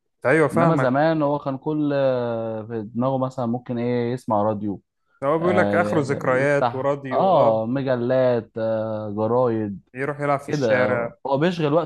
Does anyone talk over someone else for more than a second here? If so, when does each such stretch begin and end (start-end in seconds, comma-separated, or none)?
5.4-7.6